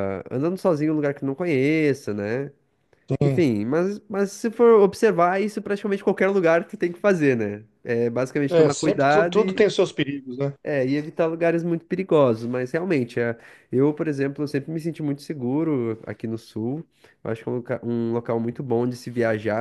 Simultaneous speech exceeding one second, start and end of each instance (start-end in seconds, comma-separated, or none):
8.5-9.7